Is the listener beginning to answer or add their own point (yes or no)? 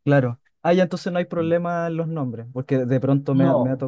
yes